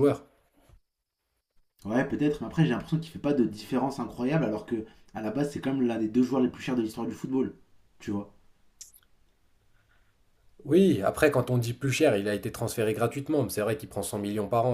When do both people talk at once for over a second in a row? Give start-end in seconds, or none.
none